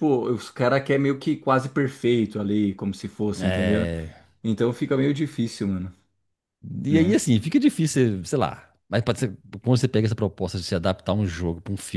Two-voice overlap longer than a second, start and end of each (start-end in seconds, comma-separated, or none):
none